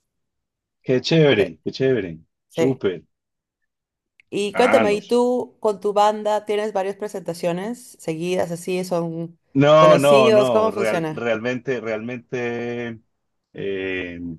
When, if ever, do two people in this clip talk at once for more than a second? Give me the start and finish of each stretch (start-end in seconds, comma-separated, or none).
9.8-11.3